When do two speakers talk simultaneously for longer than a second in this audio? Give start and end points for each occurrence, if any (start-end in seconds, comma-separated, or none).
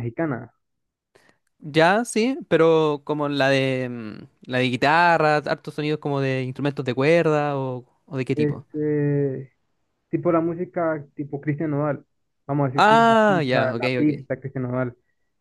12.7-14.1